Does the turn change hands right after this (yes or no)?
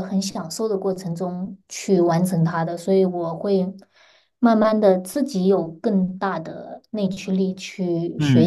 yes